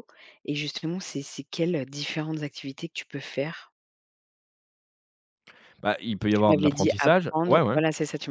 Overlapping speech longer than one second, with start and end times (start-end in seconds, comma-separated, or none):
6.3-7.8